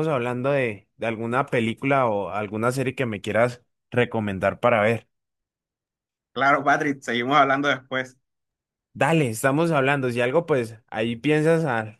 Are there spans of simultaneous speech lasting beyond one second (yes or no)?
no